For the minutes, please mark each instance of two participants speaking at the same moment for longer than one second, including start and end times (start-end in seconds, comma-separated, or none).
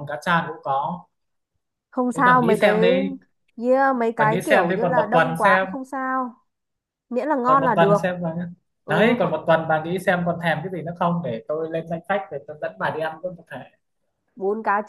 4.2-5.7